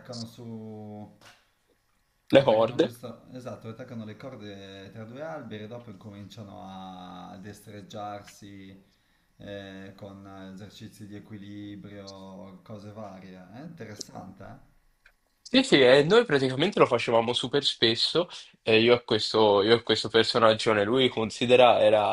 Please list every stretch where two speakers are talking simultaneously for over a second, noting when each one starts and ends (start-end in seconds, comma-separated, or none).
none